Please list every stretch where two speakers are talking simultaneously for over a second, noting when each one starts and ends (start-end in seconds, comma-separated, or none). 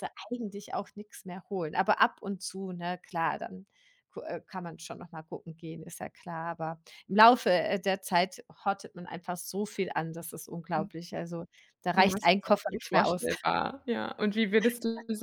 11.9-13.3